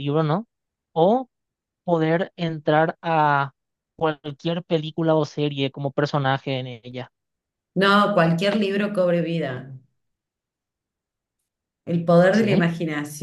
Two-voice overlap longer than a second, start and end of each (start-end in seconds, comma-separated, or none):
none